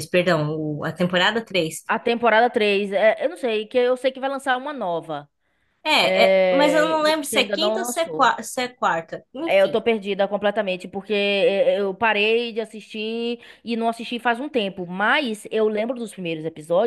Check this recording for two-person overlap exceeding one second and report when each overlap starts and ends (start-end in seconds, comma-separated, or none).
6.0-8.3